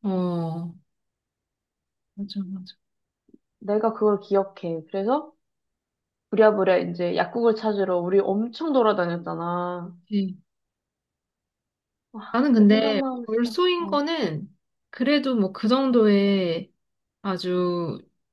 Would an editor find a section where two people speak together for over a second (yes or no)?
yes